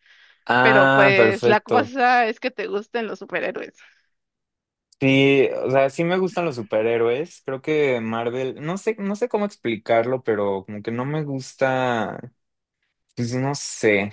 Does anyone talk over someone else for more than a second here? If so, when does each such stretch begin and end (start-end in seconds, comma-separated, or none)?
0.6-1.9